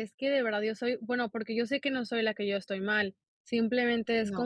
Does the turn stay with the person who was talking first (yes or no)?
yes